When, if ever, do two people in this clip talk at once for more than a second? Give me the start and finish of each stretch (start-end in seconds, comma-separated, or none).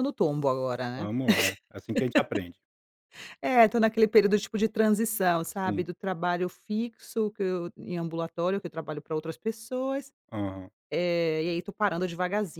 none